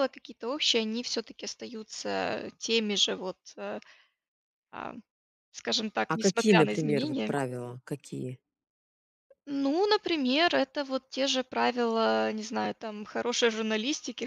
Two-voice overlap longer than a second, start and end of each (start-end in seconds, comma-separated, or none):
6.1-7.3